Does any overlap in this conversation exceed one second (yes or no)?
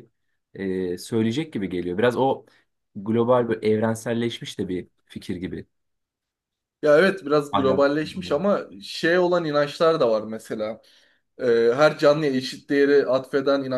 no